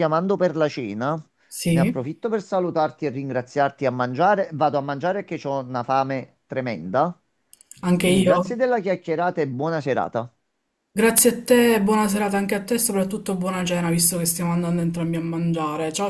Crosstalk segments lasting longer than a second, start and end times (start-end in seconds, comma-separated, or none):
none